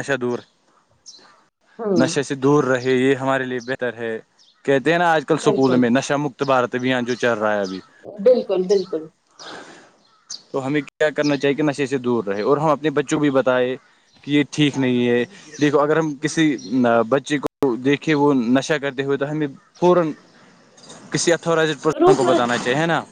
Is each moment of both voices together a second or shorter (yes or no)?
yes